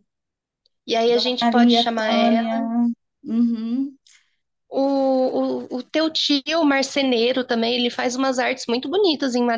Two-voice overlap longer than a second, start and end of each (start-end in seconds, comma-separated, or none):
1.4-2.6